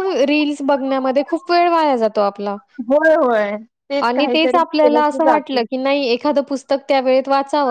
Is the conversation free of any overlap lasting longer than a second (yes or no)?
no